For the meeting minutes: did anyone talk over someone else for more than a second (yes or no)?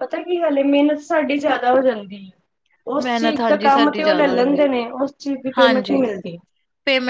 yes